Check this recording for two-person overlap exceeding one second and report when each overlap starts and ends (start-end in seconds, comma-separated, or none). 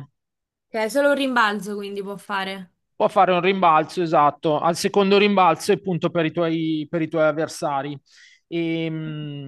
none